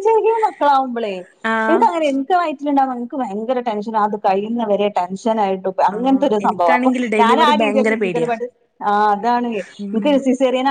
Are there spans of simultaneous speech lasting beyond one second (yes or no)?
yes